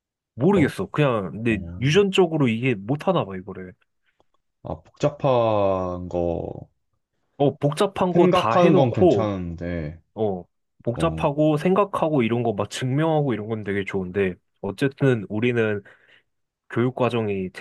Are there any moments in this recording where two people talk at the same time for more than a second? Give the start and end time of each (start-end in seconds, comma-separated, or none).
8.1-9.3